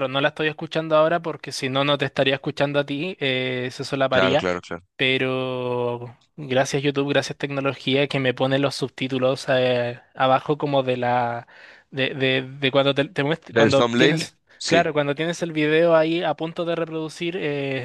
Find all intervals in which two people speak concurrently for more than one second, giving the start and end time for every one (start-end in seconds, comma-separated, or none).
13.5-14.9